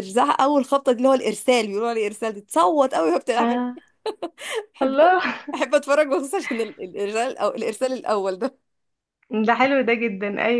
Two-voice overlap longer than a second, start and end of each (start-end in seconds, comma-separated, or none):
none